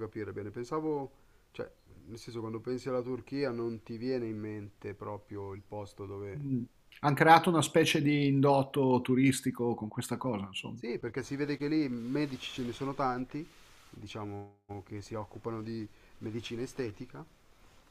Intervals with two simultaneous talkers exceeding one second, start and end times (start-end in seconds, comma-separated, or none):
none